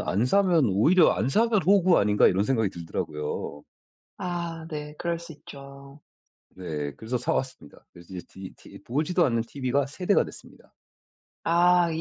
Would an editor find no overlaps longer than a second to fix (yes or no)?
yes